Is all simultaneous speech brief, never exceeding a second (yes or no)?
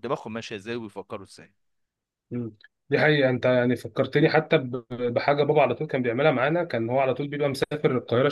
yes